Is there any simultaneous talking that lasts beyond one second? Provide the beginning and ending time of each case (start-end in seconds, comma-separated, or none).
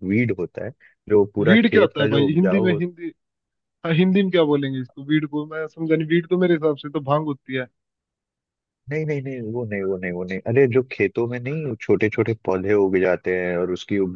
1.4-2.8